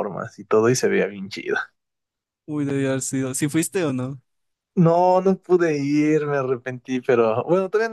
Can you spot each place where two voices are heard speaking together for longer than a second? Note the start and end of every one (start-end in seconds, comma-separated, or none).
none